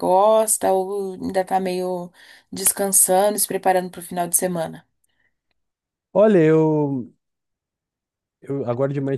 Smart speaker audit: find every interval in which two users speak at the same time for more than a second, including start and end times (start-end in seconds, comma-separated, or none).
none